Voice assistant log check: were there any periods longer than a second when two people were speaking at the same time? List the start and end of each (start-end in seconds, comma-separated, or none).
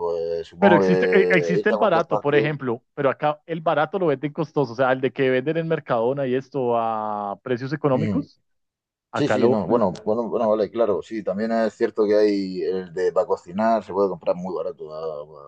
0.6-2.4